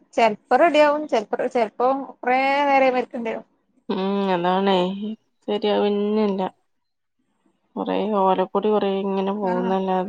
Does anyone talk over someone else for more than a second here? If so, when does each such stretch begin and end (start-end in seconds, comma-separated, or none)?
none